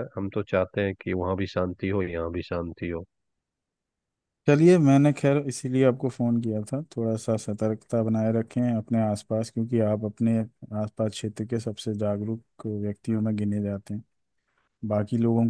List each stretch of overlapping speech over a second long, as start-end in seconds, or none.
none